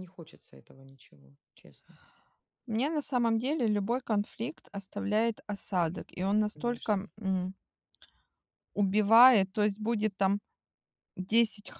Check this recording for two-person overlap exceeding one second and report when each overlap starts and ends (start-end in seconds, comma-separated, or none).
none